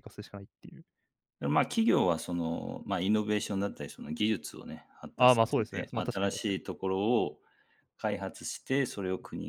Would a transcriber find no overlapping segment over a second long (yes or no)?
no